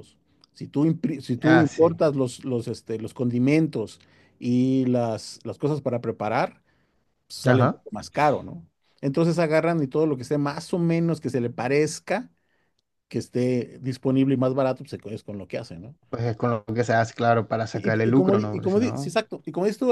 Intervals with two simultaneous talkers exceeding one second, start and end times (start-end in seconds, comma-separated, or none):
17.7-19.1